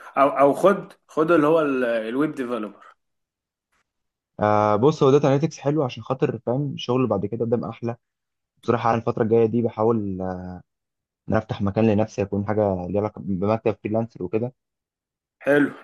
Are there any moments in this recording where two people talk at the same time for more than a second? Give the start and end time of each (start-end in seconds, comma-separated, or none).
none